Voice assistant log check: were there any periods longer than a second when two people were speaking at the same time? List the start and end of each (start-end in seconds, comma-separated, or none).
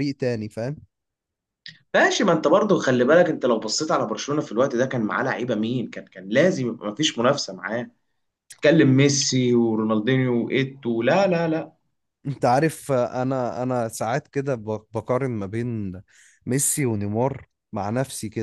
none